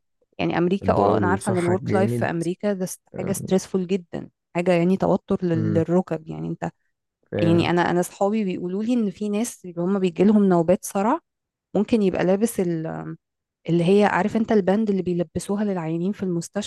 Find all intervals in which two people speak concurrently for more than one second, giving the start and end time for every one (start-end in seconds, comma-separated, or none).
0.8-2.3